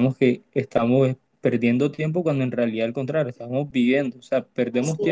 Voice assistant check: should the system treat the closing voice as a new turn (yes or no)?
no